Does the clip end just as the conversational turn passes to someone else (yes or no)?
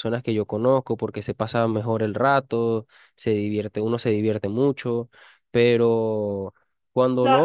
yes